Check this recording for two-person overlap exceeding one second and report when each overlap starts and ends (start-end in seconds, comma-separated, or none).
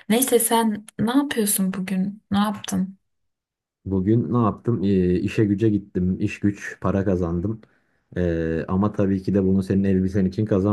none